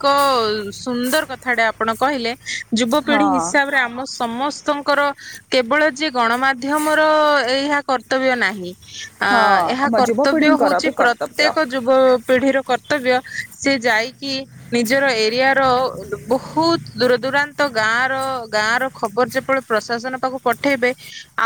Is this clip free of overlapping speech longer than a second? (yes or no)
no